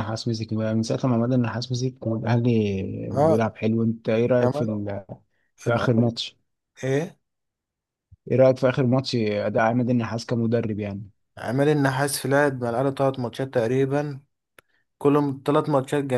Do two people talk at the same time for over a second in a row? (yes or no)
no